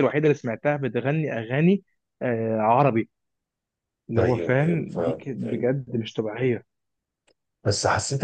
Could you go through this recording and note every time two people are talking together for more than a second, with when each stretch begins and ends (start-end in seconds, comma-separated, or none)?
4.2-5.7